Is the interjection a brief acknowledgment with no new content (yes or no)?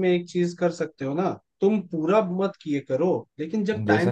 yes